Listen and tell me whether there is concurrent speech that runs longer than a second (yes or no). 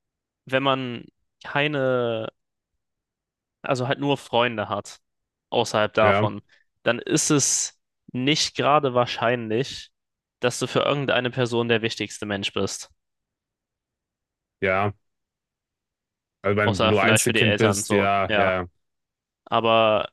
yes